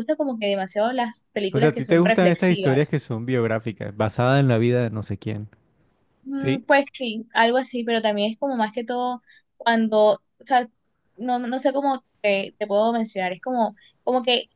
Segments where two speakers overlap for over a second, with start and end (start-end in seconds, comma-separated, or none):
1.5-2.9